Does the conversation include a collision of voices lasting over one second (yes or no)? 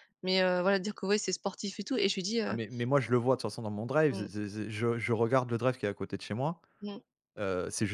no